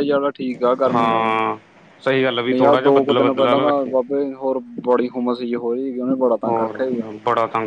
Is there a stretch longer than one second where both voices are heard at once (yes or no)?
yes